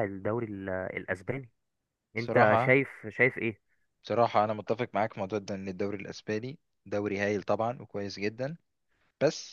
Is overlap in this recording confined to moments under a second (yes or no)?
yes